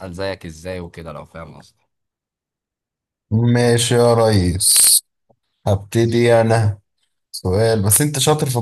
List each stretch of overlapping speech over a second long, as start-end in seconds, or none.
none